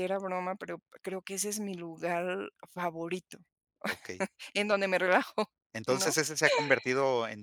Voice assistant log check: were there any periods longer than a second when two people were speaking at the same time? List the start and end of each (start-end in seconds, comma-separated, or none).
none